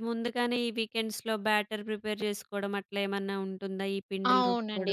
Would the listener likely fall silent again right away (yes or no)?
no